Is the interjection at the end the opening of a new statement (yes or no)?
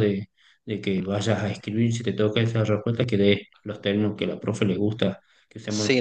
yes